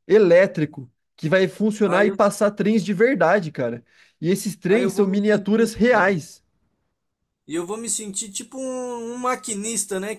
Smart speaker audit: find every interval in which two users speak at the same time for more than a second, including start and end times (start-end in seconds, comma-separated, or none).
4.7-6.2